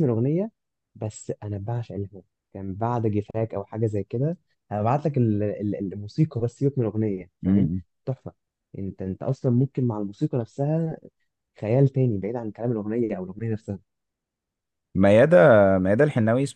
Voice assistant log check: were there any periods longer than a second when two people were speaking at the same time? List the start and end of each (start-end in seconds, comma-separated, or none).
none